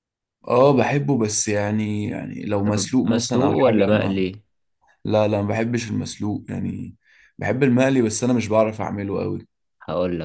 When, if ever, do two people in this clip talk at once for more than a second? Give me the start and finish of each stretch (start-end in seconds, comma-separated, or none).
2.6-4.2